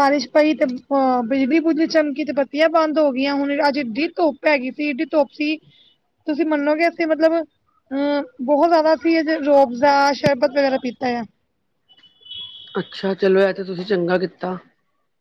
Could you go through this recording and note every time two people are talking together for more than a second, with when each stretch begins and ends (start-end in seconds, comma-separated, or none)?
none